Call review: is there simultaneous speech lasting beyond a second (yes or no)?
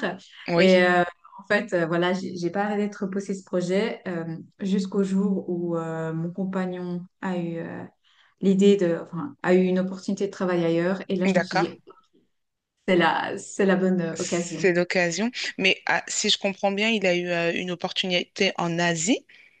no